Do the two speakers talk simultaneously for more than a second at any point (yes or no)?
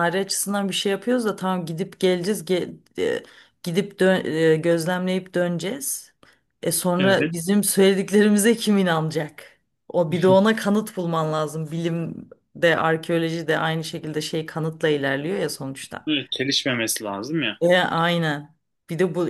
no